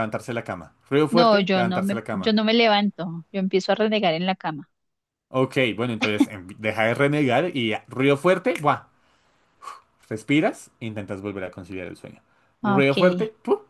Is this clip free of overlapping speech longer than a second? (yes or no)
no